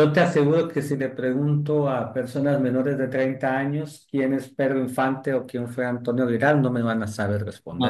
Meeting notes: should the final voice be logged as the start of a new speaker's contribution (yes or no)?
yes